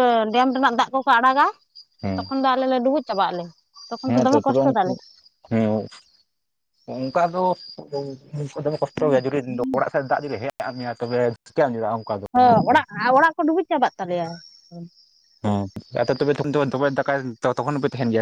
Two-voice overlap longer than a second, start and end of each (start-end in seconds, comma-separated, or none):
none